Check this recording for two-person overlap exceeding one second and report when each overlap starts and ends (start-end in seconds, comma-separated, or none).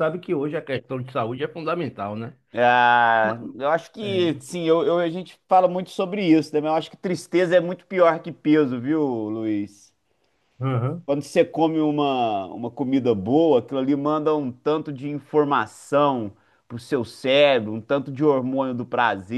none